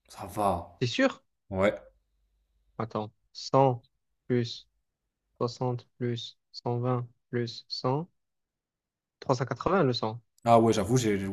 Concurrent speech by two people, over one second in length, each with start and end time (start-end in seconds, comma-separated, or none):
none